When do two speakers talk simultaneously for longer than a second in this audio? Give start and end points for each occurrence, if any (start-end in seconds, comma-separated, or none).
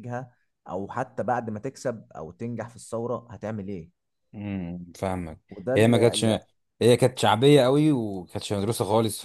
none